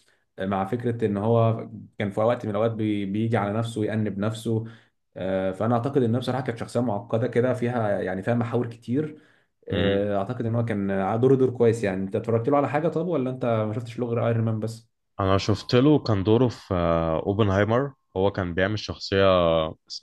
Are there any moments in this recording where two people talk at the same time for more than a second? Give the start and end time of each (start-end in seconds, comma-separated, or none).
none